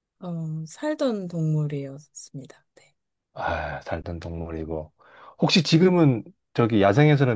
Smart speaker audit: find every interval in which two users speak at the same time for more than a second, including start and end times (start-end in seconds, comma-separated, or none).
none